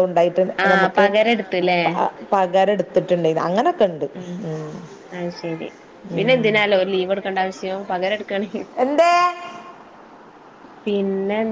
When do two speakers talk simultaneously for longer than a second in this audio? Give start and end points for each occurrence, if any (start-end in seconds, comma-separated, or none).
none